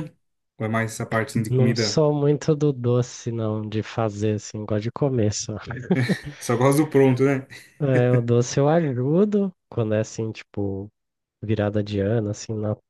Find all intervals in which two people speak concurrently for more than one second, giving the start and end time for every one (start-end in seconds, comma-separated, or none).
none